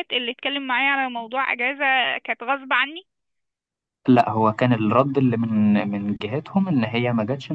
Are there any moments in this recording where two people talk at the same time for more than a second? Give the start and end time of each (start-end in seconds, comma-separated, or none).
none